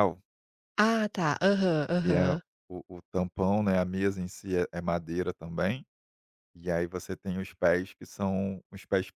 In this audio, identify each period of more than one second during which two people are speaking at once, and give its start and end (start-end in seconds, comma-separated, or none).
none